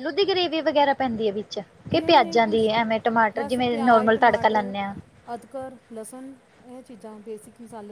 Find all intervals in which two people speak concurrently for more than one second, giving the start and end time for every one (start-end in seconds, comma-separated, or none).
3.4-4.7